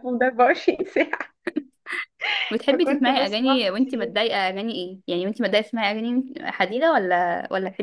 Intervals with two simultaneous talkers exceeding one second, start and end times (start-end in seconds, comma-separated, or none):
2.7-4.1